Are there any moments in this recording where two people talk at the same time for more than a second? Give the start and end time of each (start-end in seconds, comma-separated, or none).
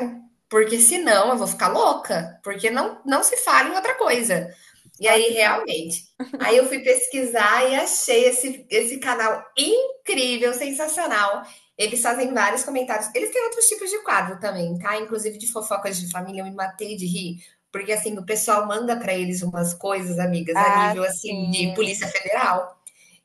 20.5-22.1